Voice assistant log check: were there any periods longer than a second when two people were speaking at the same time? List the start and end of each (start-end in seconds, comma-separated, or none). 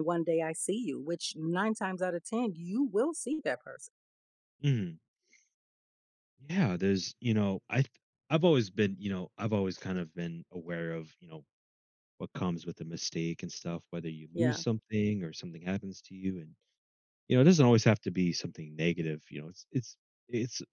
none